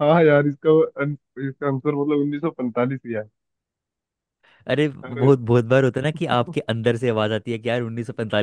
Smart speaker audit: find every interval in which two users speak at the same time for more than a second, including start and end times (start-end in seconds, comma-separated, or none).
none